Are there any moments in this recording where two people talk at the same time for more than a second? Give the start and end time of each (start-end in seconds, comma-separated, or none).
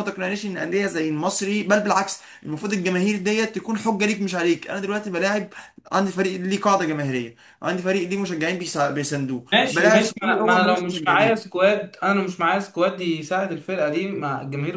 9.5-11.5